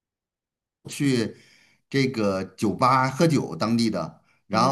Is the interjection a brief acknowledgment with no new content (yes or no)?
yes